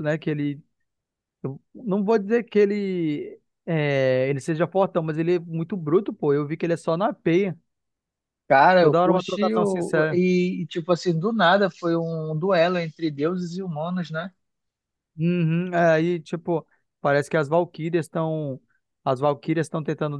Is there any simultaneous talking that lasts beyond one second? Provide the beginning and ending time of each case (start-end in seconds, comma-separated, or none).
8.8-10.2